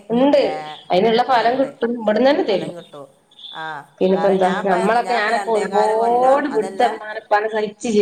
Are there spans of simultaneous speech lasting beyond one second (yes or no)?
yes